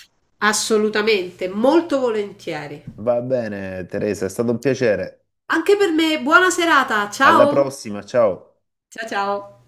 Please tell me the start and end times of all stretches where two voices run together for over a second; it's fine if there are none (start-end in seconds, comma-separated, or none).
none